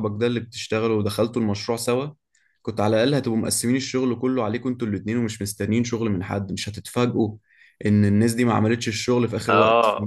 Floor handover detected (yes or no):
yes